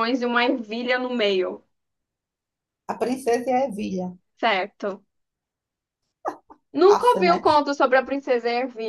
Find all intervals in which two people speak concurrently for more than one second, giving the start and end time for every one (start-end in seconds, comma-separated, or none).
none